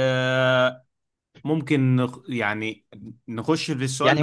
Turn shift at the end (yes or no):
yes